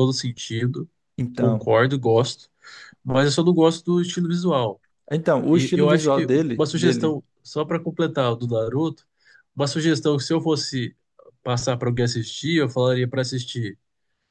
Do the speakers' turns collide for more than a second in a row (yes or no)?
yes